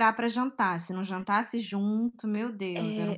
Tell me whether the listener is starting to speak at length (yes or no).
yes